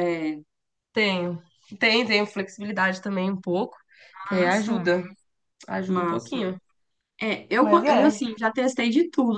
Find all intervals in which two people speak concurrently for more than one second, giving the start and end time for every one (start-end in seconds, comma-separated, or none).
none